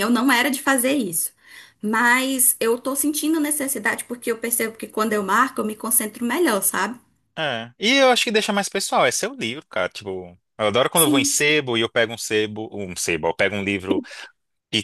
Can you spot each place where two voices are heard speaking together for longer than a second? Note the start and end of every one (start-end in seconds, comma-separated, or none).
none